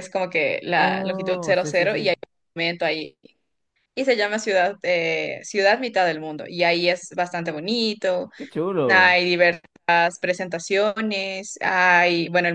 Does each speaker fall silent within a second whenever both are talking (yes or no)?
no